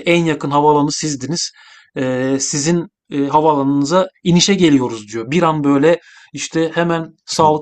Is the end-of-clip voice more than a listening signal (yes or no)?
no